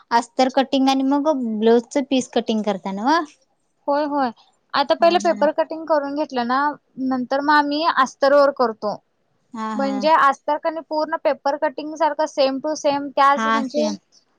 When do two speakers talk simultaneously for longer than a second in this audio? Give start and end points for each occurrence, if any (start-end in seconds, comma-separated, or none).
none